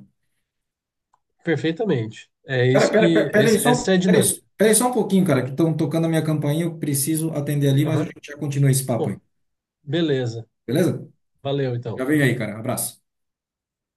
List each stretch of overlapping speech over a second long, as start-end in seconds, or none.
2.7-4.4